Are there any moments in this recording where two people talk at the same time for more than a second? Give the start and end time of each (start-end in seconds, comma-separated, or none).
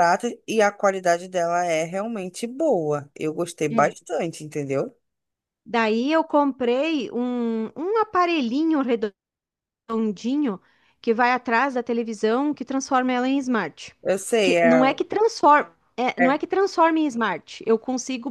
none